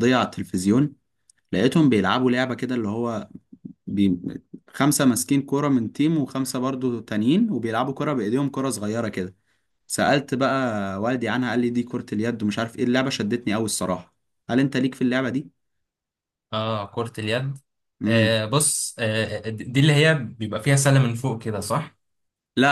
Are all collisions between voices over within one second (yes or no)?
yes